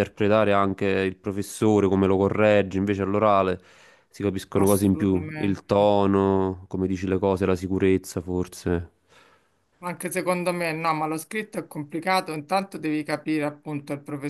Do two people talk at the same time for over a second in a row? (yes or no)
yes